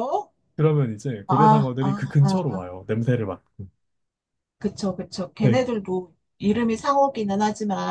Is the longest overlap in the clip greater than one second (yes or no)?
yes